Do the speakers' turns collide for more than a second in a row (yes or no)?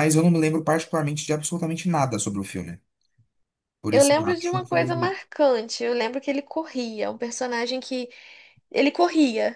yes